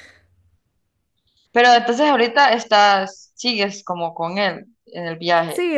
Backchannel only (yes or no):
no